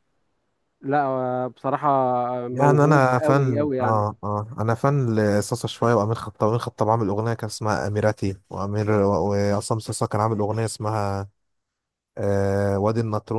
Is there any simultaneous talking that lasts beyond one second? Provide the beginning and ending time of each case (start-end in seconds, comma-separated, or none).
2.5-4.1